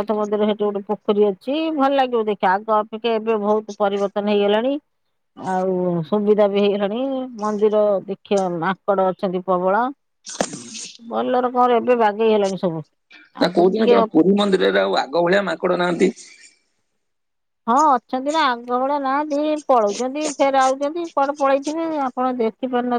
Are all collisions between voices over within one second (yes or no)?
yes